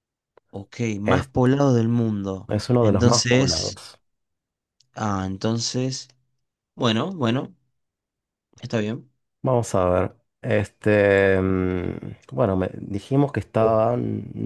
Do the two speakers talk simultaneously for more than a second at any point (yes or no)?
yes